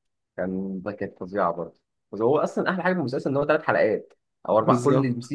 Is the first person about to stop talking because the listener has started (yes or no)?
no